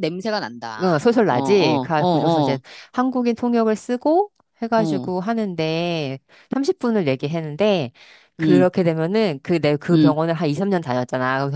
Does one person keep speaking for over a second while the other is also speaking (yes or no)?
yes